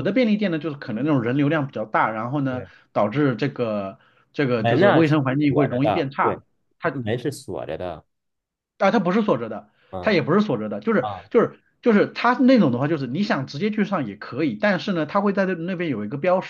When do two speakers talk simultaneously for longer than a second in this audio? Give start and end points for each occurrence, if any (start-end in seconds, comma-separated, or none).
4.6-6.4